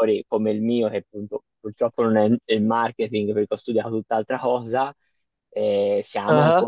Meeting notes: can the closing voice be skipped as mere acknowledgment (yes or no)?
yes